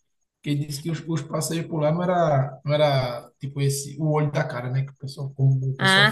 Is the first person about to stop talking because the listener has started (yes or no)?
yes